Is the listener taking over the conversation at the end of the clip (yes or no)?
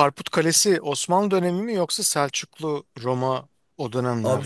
yes